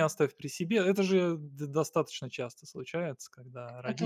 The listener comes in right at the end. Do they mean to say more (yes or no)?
no